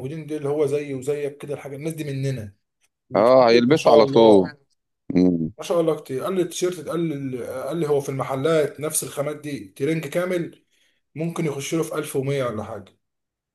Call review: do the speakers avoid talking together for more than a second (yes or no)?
no